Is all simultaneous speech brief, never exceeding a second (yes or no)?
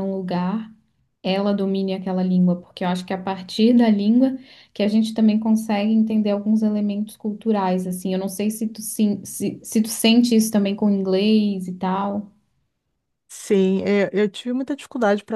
yes